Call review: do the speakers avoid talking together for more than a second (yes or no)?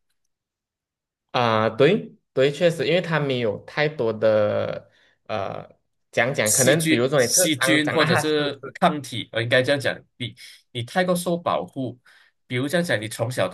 no